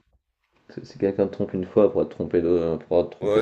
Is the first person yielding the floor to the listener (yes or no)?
yes